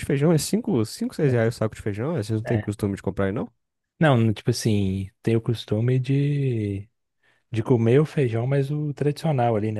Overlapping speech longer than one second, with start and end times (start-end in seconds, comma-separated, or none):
none